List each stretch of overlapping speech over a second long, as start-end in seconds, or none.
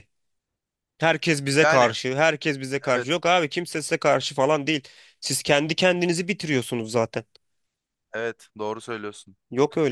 none